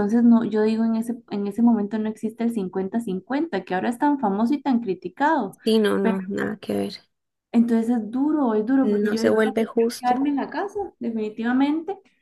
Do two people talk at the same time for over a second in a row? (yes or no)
yes